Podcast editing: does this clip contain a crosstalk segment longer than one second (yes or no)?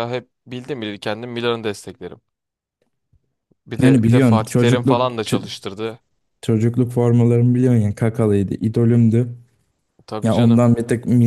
yes